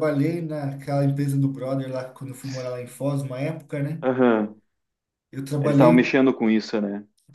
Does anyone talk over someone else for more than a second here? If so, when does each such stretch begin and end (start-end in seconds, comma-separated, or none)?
none